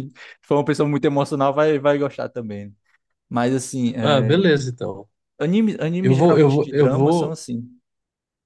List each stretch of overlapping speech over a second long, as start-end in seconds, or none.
6.0-7.4